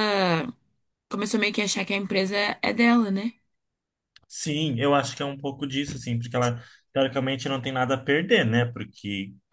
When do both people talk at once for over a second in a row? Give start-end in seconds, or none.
none